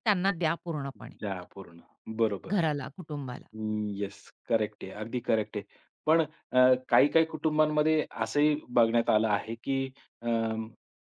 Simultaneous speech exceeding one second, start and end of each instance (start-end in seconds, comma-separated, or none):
none